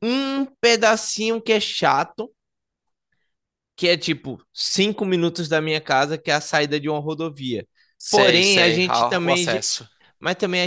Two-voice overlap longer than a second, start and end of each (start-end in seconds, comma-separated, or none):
8.1-9.7